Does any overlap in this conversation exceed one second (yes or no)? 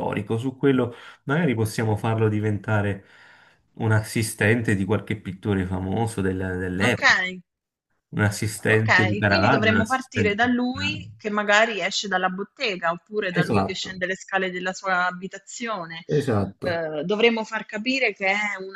yes